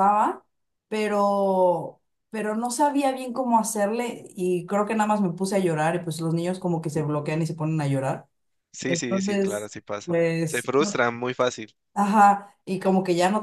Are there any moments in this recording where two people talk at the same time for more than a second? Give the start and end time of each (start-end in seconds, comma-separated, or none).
8.9-10.7